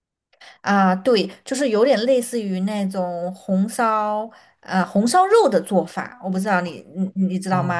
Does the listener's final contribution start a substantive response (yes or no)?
yes